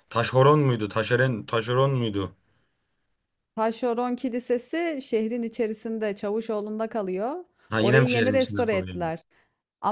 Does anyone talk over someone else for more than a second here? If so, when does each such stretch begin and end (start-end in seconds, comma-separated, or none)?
7.8-9.0